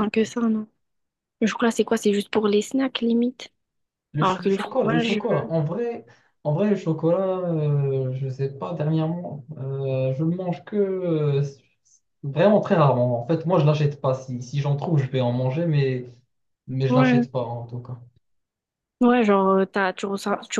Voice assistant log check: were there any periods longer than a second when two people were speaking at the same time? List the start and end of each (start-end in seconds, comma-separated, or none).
4.2-5.5